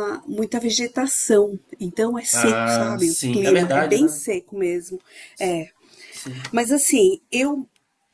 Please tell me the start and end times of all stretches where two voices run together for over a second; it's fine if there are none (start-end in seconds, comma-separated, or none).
2.3-4.2